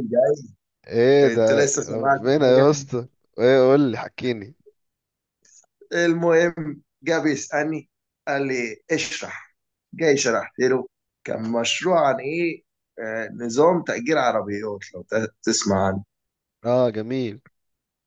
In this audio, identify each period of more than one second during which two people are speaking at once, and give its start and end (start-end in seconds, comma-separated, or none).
1.3-2.7